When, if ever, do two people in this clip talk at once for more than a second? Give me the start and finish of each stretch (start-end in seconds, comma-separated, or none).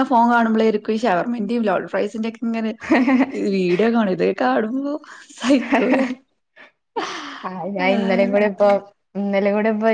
none